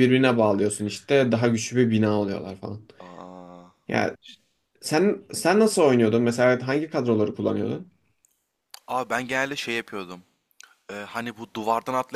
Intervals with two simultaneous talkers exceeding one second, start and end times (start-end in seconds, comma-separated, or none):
none